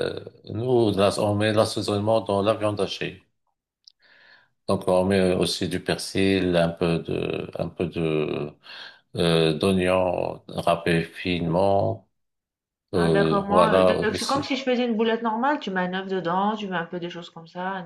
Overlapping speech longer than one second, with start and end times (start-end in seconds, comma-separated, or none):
12.9-14.4